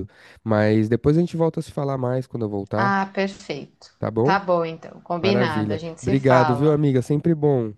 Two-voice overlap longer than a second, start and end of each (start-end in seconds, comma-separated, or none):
5.2-6.8